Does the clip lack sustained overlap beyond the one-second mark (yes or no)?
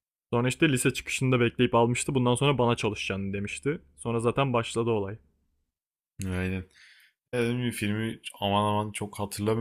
yes